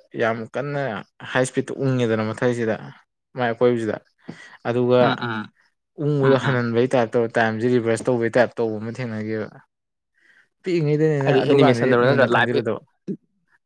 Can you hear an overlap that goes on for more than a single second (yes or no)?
yes